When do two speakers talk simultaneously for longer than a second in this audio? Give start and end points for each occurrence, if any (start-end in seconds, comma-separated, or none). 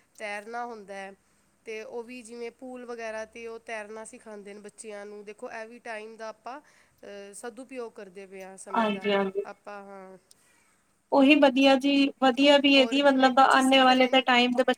12.8-14.2